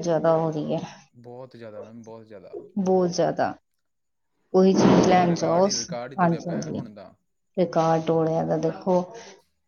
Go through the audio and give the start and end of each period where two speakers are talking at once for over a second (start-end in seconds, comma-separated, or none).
4.8-6.8